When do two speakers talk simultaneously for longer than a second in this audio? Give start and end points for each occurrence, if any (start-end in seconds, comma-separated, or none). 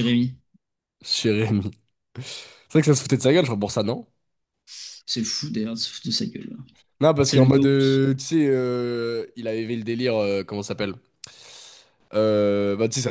none